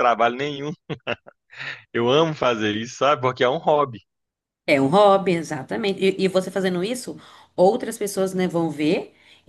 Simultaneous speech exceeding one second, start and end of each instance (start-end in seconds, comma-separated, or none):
none